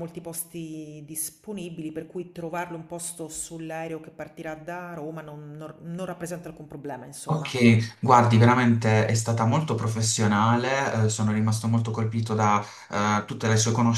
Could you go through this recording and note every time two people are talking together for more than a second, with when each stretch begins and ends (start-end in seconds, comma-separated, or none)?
none